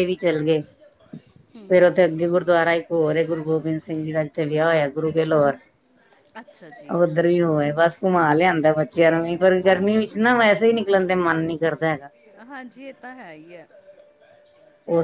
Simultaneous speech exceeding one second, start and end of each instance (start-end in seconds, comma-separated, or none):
none